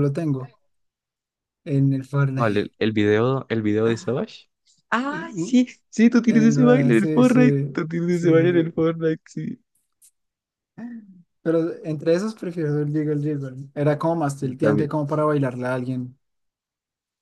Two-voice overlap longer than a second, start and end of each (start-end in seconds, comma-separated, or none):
6.3-8.7